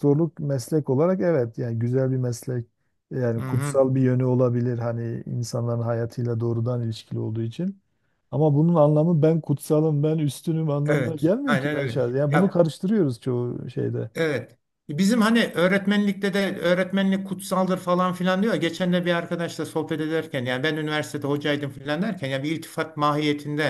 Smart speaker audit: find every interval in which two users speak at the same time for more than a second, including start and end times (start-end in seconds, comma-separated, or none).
10.8-12.6